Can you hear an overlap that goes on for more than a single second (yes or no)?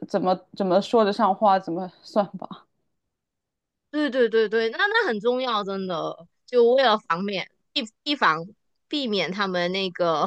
no